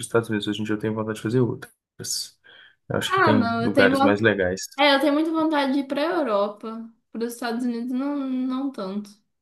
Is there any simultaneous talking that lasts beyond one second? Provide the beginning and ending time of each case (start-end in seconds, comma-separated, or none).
3.1-4.3